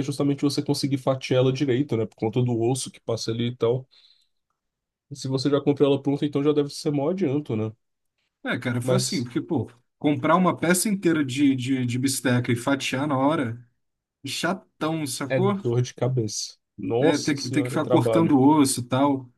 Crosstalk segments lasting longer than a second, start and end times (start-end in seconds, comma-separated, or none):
17.0-18.4